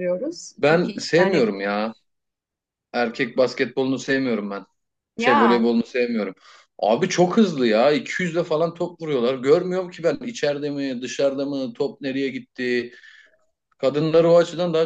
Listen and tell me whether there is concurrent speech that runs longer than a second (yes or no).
yes